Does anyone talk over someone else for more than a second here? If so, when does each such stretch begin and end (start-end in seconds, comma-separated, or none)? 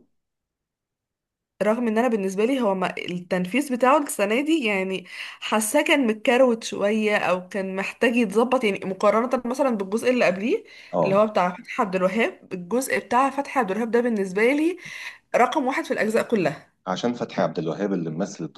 none